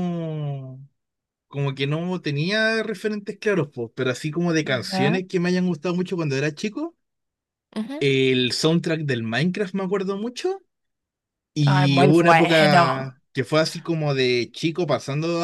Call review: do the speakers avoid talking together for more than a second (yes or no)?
no